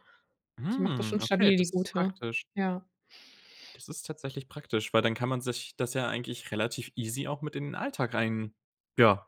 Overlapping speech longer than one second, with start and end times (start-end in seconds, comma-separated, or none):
0.7-2.1